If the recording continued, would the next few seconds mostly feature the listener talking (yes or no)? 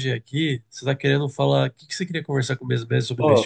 yes